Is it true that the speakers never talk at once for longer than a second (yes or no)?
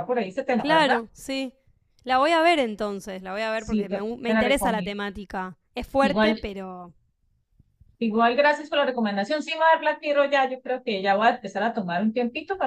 no